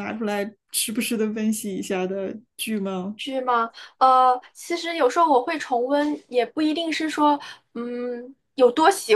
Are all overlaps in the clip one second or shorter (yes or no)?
yes